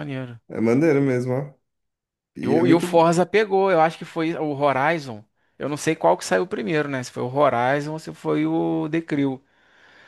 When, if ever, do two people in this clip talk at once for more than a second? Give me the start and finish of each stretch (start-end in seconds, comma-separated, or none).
none